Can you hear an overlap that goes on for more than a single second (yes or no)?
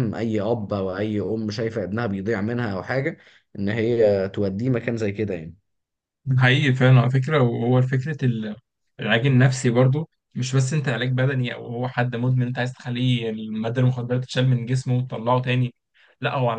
no